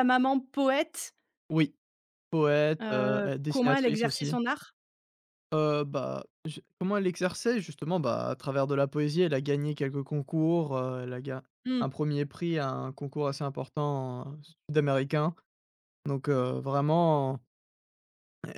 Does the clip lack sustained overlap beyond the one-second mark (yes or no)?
no